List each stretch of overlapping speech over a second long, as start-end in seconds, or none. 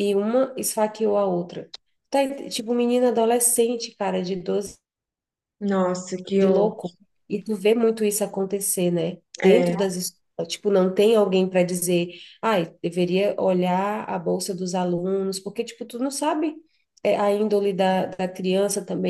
none